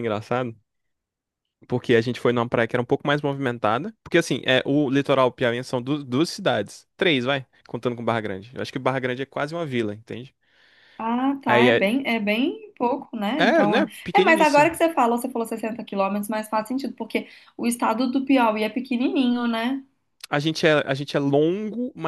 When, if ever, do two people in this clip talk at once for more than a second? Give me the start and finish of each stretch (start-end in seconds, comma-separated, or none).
13.4-14.7